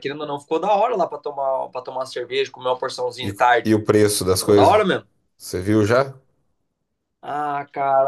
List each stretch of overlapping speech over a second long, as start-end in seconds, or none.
none